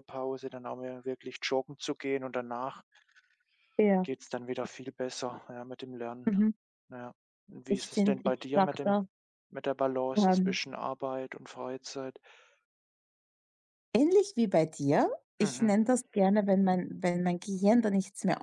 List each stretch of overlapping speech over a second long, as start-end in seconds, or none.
7.7-9.0